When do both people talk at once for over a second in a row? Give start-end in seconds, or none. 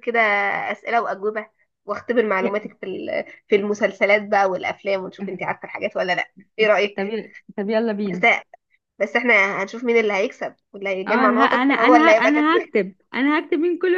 11.1-12.7